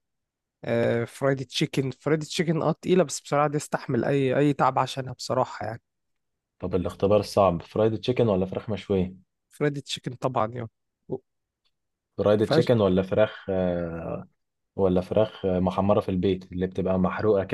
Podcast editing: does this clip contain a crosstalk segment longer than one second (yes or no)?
no